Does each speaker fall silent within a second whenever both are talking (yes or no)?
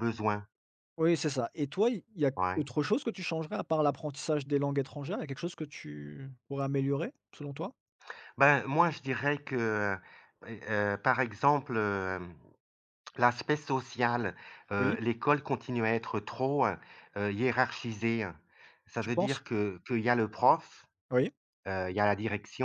yes